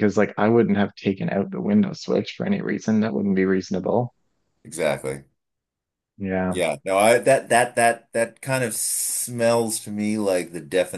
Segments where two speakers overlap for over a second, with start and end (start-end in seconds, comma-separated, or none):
none